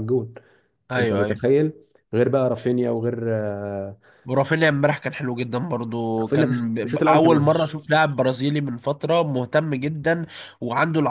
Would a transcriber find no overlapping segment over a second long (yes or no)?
no